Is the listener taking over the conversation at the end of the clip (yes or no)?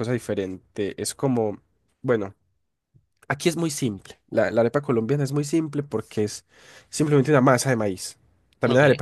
no